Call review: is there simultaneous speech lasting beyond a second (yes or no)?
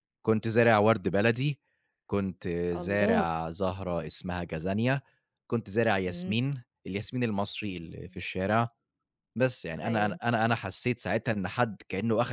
yes